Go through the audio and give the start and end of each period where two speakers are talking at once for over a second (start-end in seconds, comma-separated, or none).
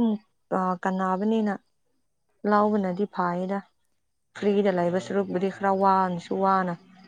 4.4-6.3